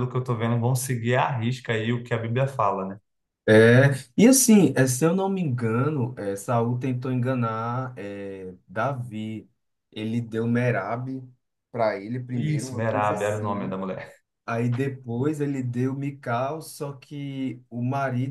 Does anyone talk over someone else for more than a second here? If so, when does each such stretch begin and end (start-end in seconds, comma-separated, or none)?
12.3-13.8